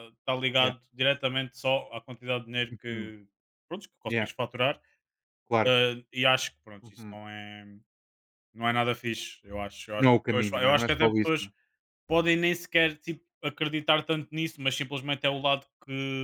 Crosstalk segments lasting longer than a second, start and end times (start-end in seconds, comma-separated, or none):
10.0-11.5